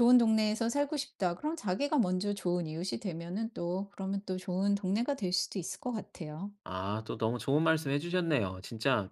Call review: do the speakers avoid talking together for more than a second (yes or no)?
yes